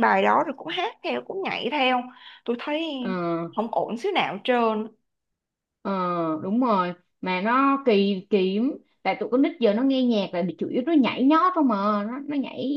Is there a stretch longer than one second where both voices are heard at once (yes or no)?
no